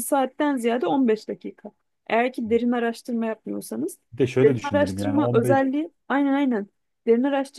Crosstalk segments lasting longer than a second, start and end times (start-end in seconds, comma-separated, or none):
4.4-5.7